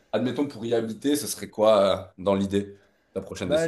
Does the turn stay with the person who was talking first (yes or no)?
no